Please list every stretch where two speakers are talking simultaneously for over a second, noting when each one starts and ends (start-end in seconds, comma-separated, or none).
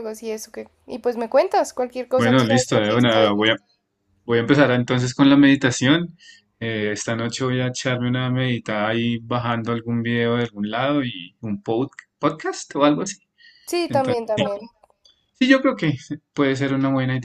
2.2-3.4